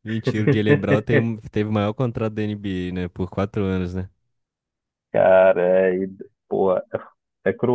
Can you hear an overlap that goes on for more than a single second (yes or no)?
no